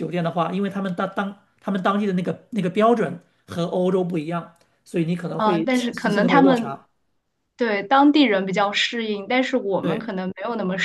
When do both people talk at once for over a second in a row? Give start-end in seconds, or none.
5.4-6.8